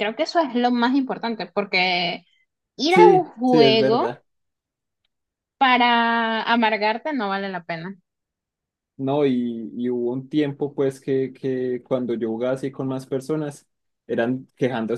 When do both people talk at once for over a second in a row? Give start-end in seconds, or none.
2.9-4.1